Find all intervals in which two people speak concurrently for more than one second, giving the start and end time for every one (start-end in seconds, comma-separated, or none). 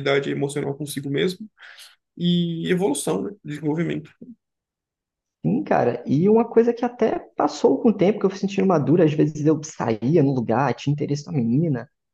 none